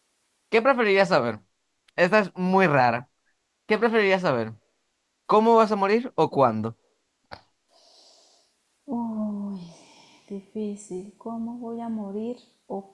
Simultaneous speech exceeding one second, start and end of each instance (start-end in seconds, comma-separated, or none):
none